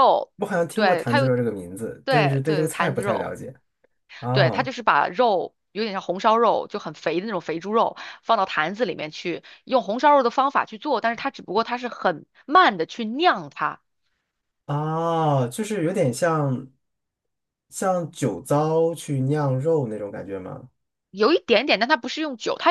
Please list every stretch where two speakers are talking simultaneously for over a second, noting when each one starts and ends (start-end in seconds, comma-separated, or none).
2.0-3.4